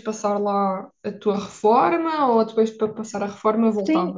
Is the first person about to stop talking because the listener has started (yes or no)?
yes